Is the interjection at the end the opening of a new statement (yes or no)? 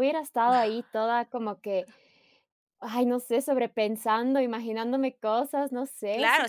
yes